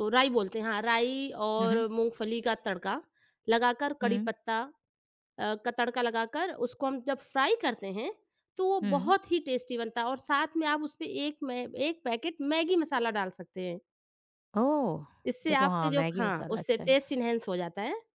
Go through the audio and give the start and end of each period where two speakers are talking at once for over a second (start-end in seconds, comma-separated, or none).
15.5-17.0